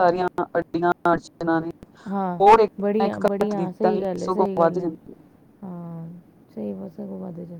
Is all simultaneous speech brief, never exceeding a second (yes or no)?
no